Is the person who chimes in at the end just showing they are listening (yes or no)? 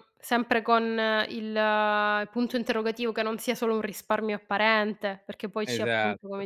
no